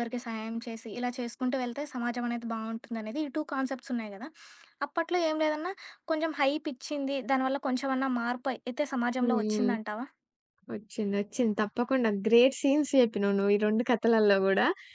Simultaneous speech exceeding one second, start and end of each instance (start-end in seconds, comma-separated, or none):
none